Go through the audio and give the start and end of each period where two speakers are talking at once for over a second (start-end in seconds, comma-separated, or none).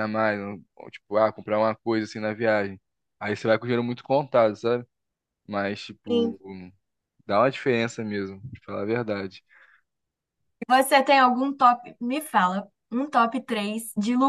none